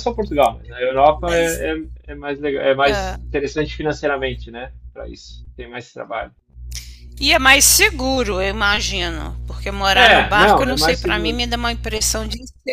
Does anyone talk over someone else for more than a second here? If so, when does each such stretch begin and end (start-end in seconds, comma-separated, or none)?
9.9-11.4